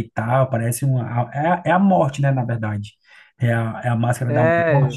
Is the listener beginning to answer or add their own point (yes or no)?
yes